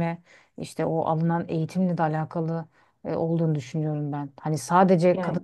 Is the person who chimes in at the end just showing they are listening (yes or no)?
yes